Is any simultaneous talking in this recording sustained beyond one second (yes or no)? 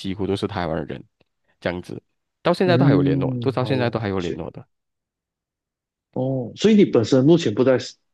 yes